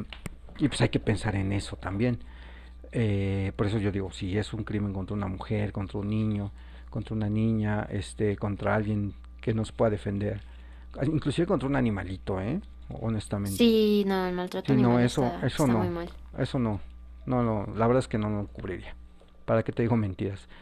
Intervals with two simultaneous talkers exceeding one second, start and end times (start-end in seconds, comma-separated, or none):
14.6-15.9